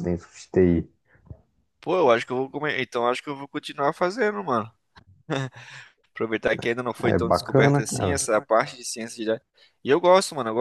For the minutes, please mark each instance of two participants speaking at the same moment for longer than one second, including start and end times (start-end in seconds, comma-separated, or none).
7.0-8.2